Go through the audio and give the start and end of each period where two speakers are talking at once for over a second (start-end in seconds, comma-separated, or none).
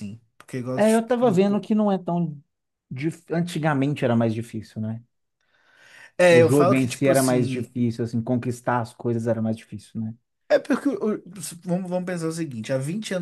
6.3-7.7